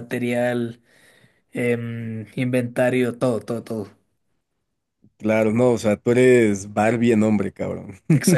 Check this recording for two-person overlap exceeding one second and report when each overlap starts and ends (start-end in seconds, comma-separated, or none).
none